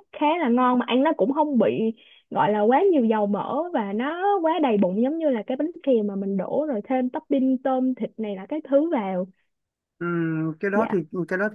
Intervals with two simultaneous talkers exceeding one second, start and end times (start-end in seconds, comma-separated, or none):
none